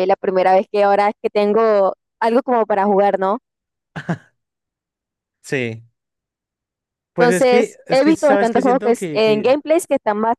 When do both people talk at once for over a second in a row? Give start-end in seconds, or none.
7.2-9.6